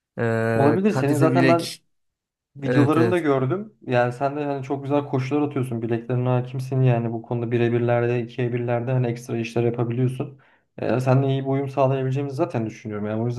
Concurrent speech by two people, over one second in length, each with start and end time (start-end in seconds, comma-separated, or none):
0.5-1.8